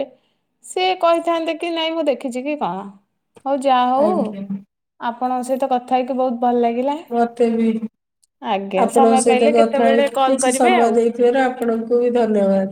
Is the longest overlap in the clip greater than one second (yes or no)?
yes